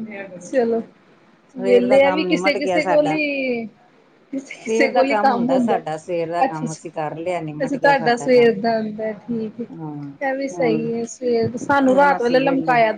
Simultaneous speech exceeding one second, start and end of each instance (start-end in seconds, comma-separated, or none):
1.6-3.1, 6.4-8.5